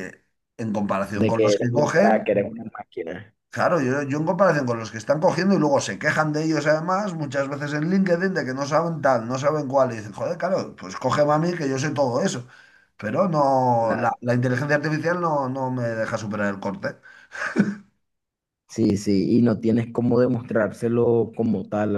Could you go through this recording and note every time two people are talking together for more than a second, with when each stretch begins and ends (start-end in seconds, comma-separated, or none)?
1.1-2.4